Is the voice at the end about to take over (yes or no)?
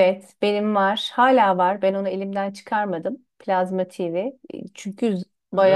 no